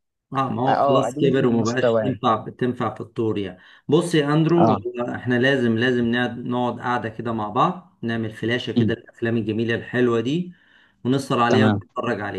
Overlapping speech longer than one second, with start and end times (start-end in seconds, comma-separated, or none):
0.7-2.2